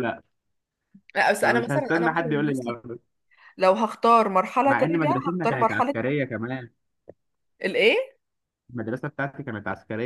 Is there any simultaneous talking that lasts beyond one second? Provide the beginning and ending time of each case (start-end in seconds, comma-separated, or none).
1.4-2.8, 4.7-5.9